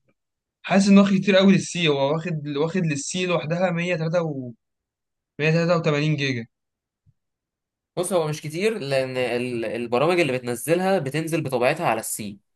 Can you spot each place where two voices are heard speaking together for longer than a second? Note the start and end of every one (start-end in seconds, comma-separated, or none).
none